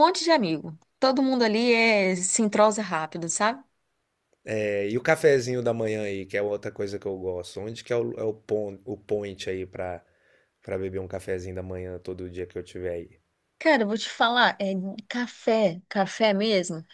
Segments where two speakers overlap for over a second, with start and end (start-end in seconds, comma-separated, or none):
none